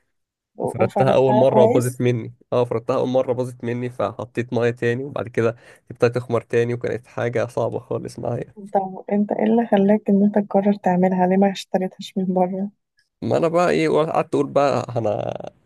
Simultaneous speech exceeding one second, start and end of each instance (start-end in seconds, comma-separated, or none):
0.7-2.0